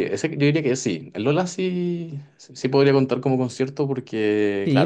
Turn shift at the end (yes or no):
yes